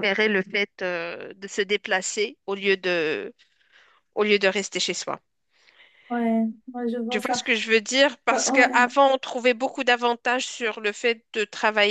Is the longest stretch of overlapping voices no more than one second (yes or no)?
yes